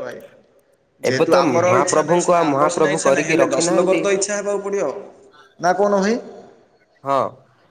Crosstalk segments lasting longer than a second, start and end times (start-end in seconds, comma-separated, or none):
1.1-4.0